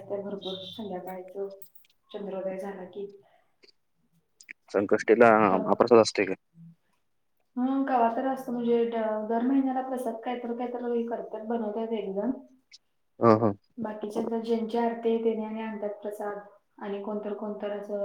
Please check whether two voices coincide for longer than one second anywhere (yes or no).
no